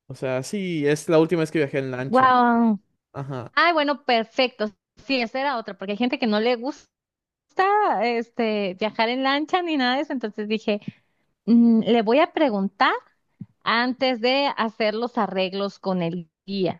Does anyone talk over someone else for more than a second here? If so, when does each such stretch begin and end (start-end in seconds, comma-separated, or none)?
none